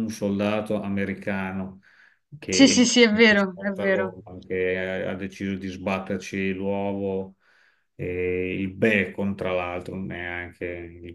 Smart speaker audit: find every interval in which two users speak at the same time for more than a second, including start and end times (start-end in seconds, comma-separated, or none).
2.5-4.1